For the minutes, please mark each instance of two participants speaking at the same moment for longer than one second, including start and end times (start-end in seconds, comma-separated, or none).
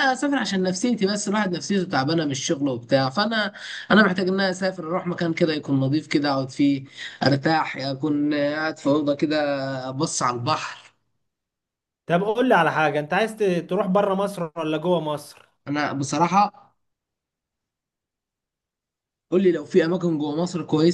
none